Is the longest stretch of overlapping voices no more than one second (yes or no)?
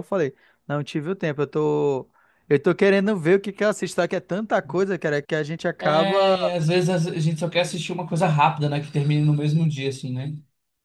yes